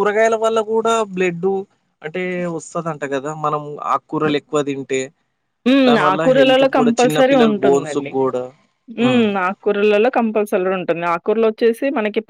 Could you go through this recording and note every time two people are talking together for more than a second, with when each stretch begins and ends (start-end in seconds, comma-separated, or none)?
5.9-8.1